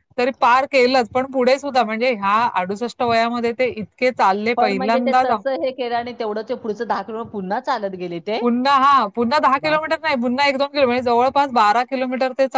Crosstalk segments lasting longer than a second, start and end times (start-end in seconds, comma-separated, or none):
none